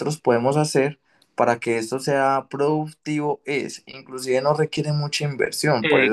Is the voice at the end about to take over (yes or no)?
yes